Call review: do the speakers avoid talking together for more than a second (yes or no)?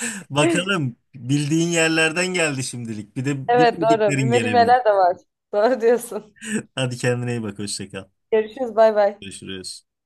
no